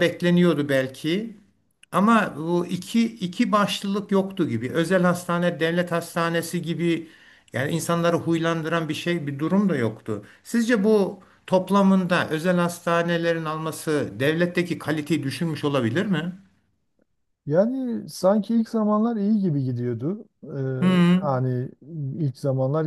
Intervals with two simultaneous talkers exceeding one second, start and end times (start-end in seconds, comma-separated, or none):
none